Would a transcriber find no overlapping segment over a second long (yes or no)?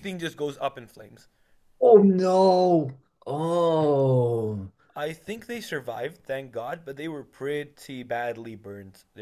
yes